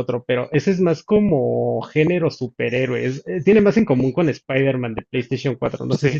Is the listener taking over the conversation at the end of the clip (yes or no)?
yes